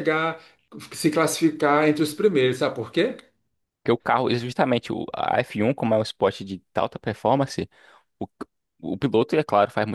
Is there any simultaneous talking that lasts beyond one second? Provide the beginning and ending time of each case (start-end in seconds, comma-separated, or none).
none